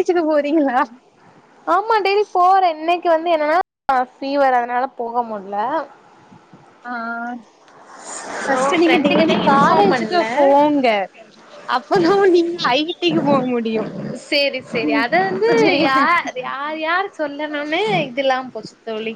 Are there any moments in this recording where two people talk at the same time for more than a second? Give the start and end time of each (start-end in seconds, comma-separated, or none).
8.8-10.5